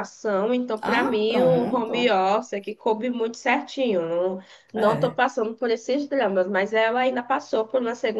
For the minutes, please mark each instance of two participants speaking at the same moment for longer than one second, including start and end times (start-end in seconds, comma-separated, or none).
0.9-2.2